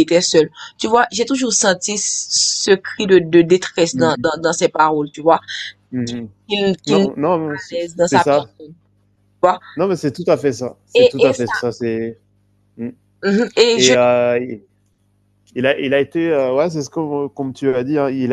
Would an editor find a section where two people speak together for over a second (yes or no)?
yes